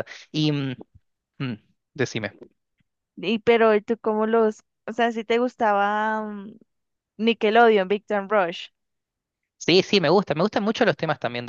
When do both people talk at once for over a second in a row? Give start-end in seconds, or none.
none